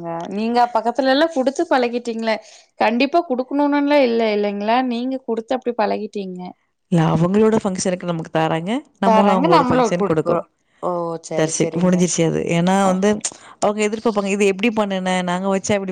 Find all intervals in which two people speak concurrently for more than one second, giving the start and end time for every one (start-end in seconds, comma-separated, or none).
9.1-10.4